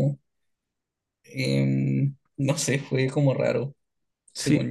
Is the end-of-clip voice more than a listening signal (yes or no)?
yes